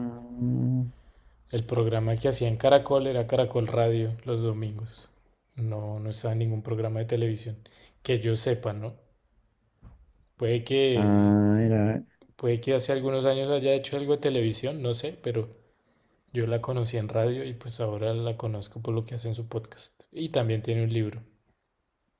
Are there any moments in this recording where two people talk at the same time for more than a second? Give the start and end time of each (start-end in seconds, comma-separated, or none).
none